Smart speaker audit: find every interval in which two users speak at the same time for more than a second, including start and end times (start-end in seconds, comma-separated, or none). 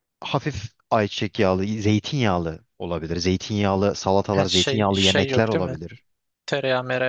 4.3-5.8